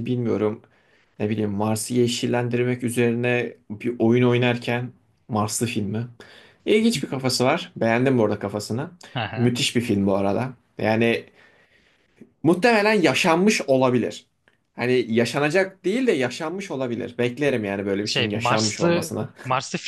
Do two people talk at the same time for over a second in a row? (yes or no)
yes